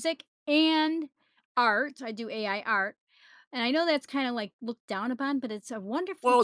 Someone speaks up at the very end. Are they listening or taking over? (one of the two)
taking over